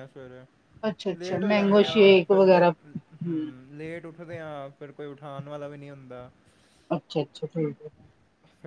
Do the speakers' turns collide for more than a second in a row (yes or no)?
yes